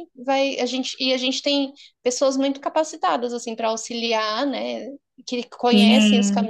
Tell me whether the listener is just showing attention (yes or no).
no